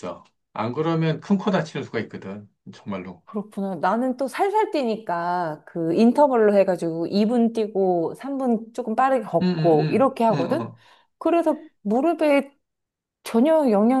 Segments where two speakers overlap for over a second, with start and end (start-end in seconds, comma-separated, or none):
9.4-10.7